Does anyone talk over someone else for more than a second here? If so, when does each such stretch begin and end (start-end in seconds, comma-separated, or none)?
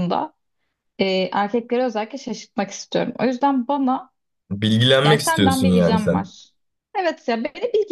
5.0-6.3